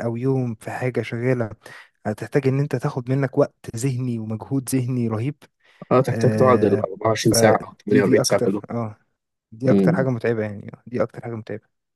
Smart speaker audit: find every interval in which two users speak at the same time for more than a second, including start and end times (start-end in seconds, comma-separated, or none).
6.1-8.6